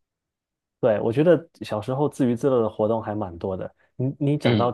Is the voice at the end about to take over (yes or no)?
no